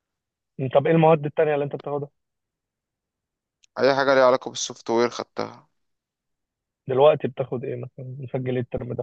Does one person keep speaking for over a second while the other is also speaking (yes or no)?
no